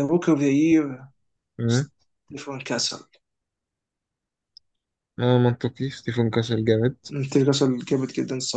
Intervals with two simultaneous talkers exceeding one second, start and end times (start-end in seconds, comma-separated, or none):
none